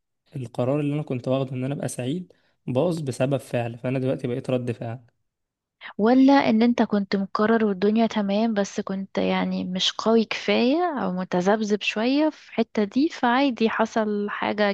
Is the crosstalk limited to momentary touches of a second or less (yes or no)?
yes